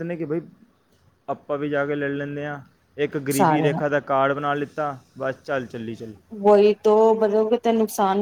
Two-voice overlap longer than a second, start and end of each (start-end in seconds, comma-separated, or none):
none